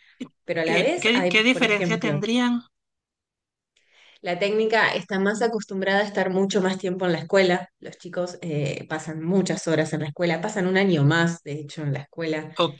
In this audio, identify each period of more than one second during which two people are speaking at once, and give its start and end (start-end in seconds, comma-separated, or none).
0.6-2.2